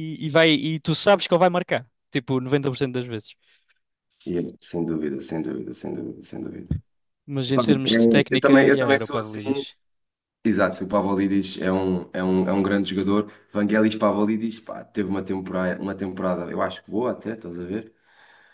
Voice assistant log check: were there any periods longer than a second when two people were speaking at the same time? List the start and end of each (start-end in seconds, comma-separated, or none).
7.4-9.6